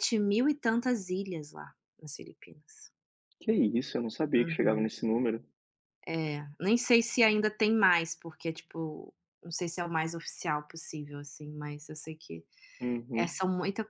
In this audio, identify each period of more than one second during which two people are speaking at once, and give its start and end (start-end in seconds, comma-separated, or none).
none